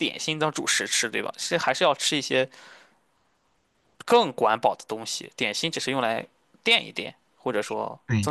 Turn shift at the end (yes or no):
yes